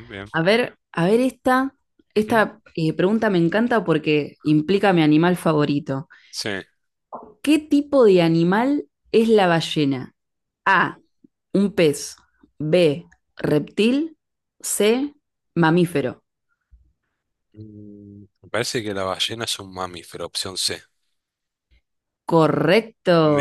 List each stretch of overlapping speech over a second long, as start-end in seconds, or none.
none